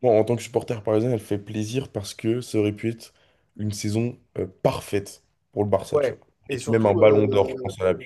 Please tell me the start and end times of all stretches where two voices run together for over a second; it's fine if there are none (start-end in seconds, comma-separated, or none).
5.9-7.5